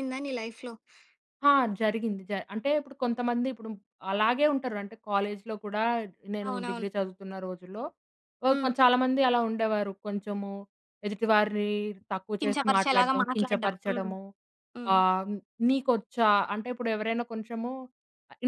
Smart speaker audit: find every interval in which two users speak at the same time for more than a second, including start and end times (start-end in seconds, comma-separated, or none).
12.4-14.1